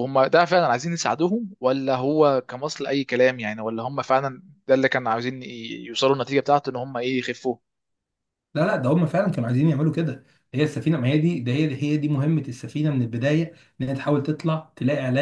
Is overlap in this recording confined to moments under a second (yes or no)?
yes